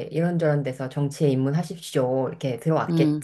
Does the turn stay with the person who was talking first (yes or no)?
no